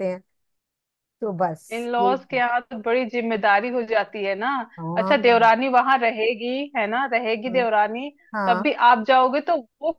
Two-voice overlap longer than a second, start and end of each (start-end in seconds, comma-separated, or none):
none